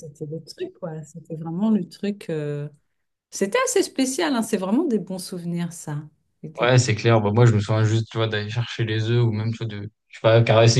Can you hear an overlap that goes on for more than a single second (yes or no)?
no